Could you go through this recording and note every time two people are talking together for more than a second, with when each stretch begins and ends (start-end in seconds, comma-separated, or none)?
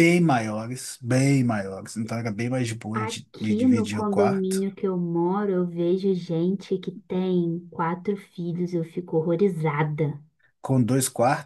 2.9-4.7